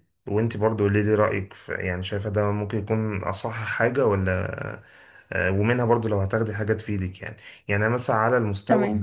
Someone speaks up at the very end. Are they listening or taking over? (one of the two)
listening